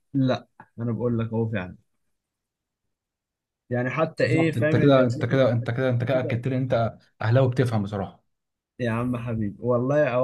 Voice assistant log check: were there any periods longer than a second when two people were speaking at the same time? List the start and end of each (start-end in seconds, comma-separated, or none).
4.2-6.4